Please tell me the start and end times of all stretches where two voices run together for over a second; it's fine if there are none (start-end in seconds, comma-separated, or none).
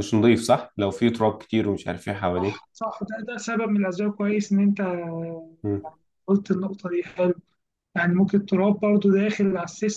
none